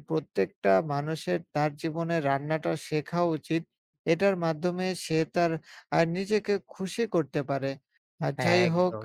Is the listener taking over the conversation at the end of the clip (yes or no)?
no